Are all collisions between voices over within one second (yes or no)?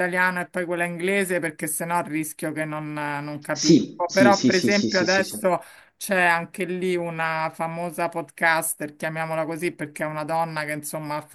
no